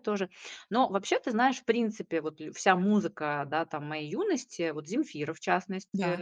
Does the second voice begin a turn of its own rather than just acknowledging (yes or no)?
no